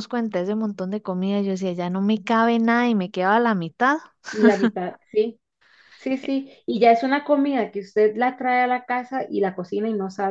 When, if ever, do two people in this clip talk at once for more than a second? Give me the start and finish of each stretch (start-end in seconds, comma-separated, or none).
none